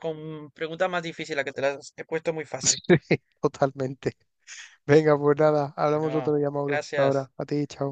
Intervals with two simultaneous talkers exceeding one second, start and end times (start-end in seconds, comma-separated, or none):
5.9-7.3